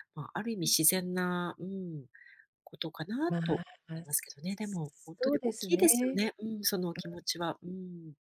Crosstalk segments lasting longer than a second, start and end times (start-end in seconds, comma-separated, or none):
3.3-5.9